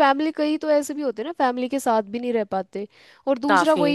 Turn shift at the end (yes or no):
no